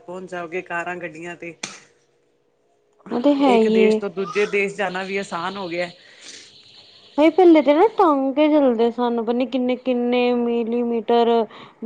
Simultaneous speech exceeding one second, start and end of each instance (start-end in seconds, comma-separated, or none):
none